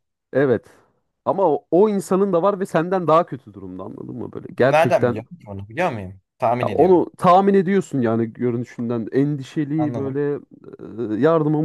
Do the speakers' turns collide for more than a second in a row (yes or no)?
no